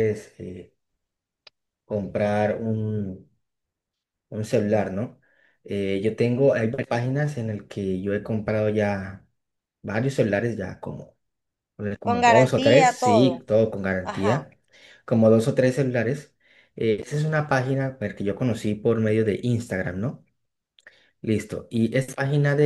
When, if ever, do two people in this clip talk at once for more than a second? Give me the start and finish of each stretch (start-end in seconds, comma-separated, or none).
12.0-13.4